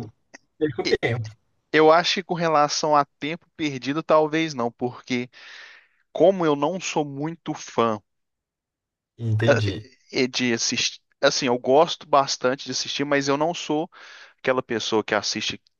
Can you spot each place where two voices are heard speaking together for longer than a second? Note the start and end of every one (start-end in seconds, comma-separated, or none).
none